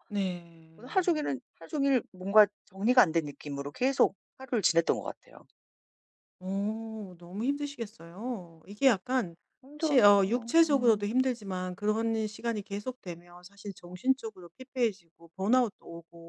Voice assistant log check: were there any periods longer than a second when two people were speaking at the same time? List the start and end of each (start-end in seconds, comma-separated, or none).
9.8-11.1